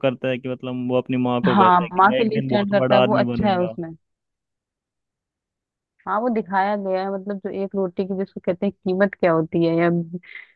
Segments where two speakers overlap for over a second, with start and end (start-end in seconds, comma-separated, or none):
1.4-3.7